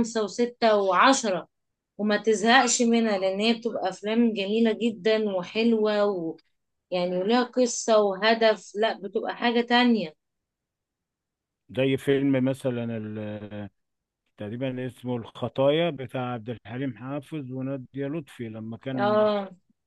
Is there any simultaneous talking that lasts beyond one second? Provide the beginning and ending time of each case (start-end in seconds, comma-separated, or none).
none